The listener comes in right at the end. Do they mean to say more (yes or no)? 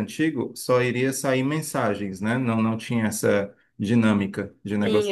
yes